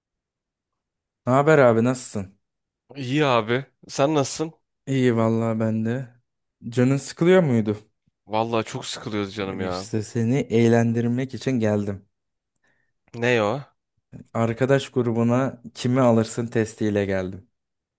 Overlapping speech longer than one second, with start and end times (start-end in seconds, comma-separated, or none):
none